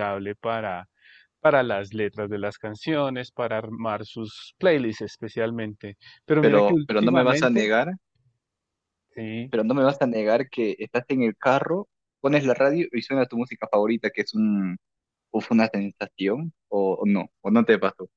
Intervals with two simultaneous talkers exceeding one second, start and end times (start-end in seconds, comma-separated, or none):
6.4-7.7